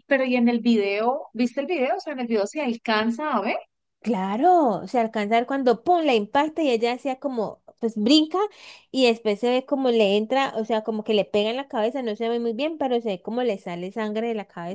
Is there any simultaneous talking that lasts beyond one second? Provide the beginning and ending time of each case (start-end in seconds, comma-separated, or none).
none